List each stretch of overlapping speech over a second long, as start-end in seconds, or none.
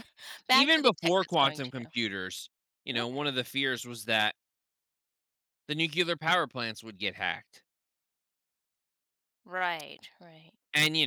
0.5-1.9